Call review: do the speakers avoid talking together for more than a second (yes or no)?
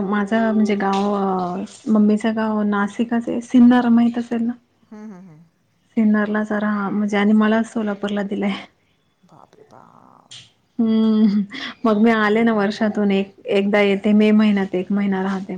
yes